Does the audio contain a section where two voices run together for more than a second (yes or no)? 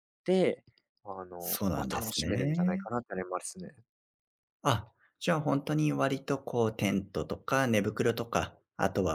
yes